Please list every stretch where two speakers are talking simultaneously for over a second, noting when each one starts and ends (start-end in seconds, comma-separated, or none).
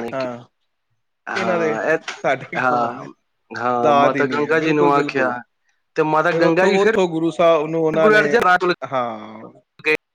3.7-5.3